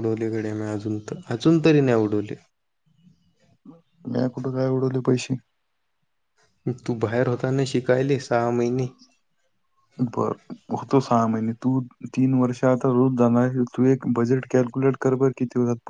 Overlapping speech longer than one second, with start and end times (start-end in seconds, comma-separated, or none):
none